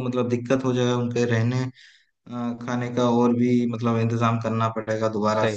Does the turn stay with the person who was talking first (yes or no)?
no